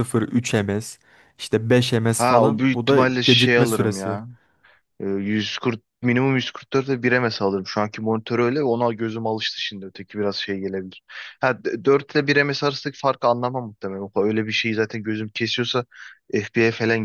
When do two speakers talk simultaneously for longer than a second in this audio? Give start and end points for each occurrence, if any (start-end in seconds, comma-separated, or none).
2.2-4.2